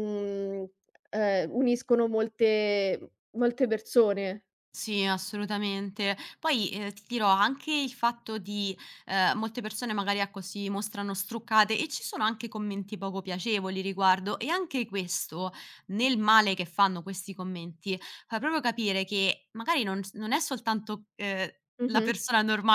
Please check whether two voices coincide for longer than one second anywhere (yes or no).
no